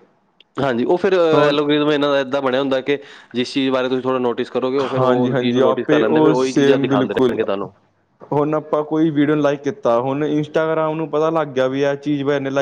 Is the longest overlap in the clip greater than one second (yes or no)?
yes